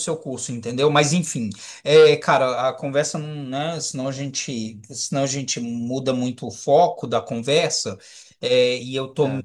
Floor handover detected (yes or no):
no